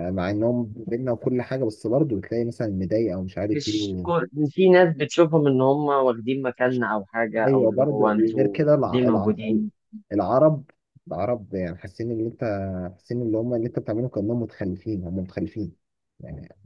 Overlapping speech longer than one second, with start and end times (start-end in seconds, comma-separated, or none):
7.5-9.4